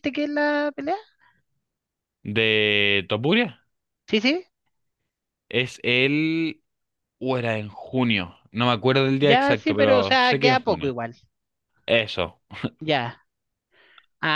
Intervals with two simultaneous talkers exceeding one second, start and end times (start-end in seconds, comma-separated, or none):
9.2-10.9